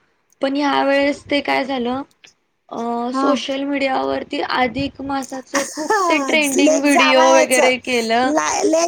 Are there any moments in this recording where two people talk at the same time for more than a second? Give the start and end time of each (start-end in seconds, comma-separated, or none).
5.8-7.7